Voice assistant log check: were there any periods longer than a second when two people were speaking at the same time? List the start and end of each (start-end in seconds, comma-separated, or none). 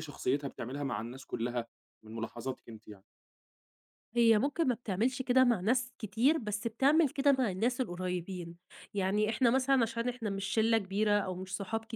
none